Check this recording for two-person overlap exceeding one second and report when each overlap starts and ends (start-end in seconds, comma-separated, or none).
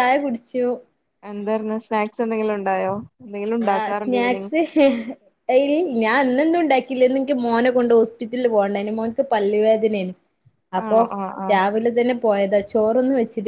none